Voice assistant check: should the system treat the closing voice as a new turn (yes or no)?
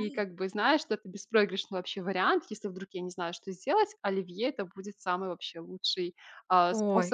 no